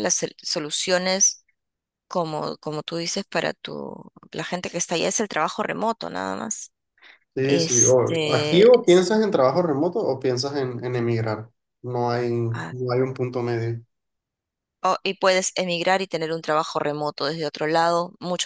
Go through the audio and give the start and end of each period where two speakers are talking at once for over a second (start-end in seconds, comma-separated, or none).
7.4-9.0